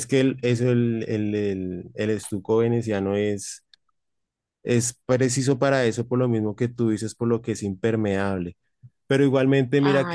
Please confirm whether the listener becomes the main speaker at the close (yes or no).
no